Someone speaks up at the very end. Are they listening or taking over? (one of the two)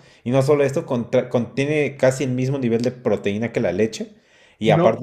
listening